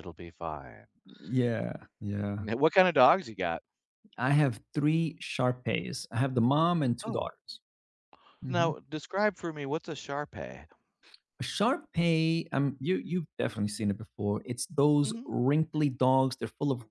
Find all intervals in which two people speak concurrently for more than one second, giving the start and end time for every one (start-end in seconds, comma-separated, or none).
none